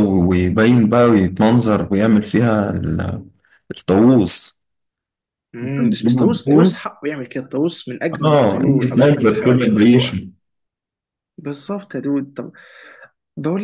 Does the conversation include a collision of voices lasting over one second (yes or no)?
yes